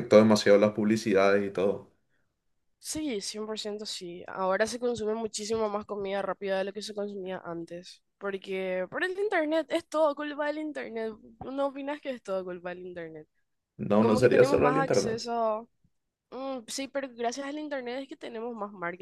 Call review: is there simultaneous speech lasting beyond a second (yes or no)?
yes